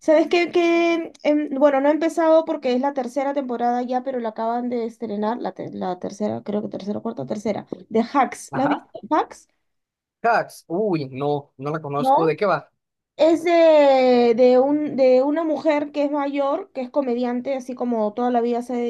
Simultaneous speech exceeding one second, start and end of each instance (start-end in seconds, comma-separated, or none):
none